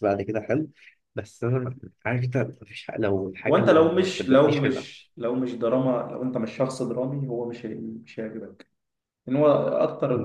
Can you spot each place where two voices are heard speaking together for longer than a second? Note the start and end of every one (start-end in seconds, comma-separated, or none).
3.5-4.9